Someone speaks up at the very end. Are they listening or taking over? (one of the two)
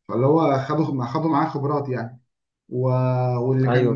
listening